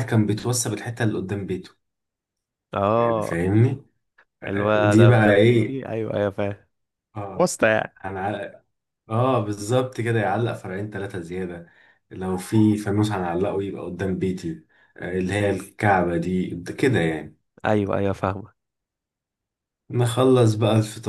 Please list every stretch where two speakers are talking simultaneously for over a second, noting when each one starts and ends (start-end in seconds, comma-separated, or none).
4.5-5.8